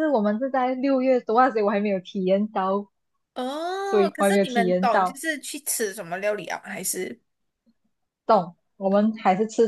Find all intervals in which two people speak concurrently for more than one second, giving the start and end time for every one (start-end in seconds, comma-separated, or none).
3.9-5.2